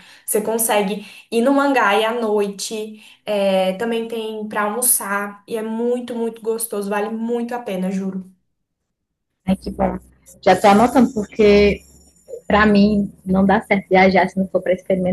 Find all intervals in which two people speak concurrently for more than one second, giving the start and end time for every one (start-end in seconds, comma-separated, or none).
none